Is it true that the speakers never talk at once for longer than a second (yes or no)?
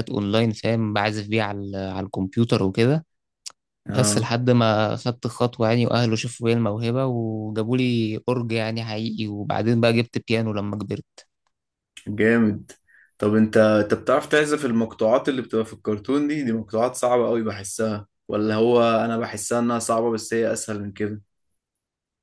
yes